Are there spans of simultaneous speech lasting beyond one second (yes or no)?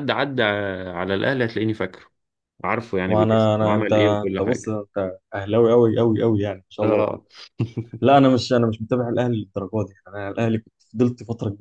yes